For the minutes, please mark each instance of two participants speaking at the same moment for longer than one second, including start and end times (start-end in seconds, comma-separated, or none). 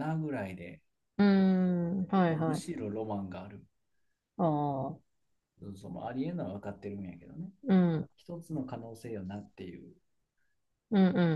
none